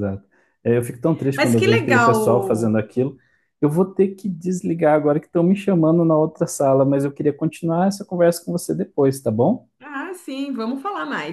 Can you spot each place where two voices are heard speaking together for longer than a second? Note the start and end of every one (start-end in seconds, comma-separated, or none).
1.4-2.8